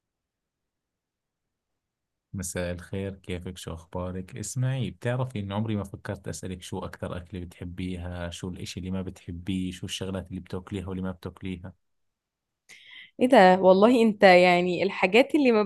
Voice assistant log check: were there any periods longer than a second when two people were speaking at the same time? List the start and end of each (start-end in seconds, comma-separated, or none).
none